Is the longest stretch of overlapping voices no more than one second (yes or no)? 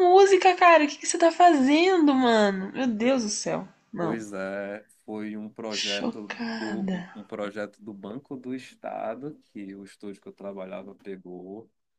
no